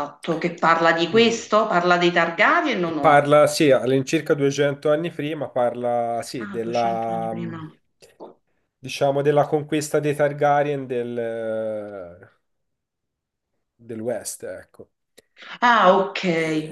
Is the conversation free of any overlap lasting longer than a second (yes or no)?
no